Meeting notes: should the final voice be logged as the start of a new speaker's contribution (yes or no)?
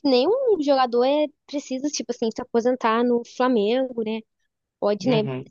no